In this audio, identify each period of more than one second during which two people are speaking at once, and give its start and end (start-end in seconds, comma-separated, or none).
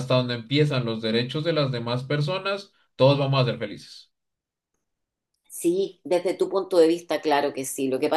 none